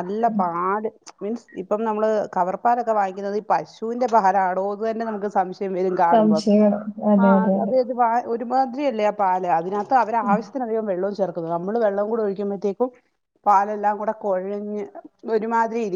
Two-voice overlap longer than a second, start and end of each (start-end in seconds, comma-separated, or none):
none